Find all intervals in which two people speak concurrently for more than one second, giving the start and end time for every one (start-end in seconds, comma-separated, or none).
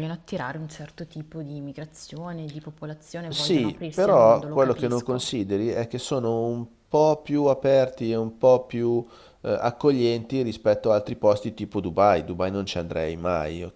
3.3-5.2